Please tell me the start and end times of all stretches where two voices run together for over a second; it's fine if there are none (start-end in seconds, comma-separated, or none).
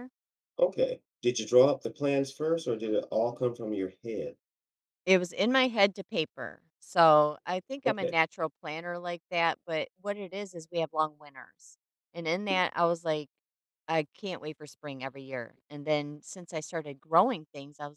none